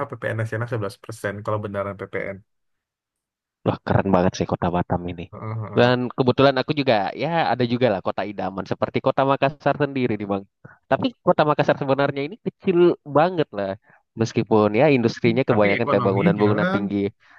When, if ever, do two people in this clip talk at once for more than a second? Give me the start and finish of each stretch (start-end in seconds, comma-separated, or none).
15.5-16.8